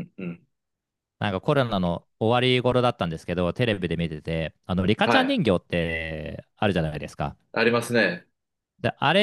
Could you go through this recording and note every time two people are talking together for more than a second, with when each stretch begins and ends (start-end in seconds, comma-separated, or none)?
none